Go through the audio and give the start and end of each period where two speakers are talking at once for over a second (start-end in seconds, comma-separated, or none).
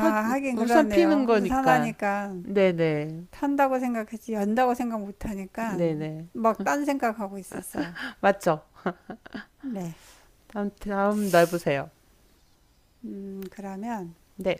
0.5-1.9